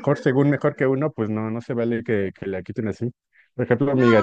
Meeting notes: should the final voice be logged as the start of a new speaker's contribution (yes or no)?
yes